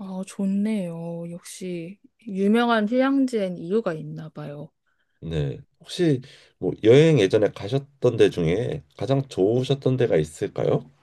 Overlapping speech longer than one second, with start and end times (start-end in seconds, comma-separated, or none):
none